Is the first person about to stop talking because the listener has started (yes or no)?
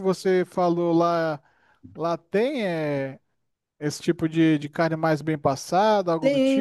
yes